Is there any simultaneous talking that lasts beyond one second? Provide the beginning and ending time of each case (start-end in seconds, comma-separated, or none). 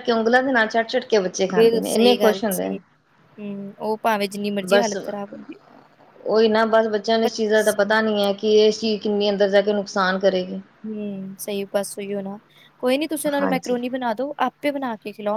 1.5-2.8